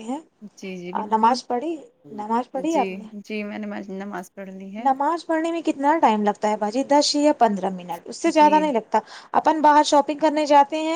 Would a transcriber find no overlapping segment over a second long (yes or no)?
yes